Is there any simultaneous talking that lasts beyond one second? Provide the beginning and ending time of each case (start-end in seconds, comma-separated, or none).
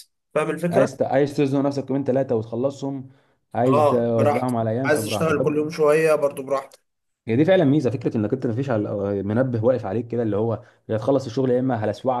3.7-5.5